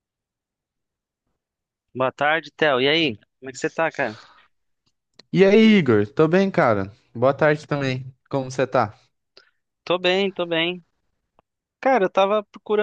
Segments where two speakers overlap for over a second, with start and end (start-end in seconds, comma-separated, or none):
none